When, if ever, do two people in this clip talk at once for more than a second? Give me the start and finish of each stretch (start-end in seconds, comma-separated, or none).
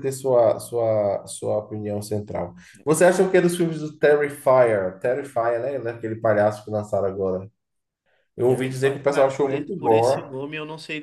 8.4-10.3